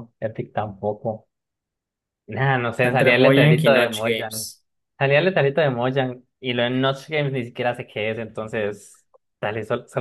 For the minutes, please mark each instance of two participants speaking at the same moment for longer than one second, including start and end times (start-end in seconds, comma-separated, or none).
2.8-4.5